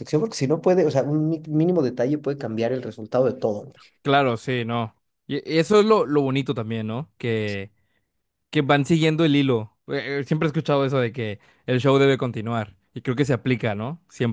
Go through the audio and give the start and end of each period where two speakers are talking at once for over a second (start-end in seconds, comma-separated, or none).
none